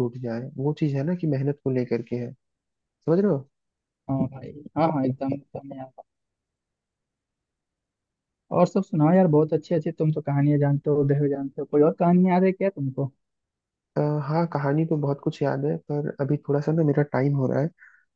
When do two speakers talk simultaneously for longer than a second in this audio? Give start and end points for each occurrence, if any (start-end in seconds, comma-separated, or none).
none